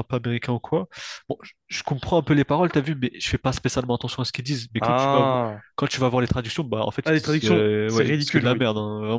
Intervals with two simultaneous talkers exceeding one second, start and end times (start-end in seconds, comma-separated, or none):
7.0-8.7